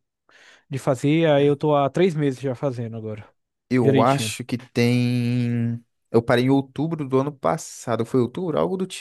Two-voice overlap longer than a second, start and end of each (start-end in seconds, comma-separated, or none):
none